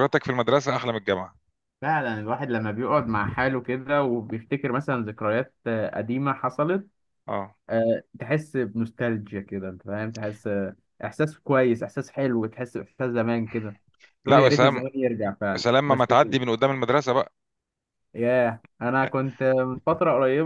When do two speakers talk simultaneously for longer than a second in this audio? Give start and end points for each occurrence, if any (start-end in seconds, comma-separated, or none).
none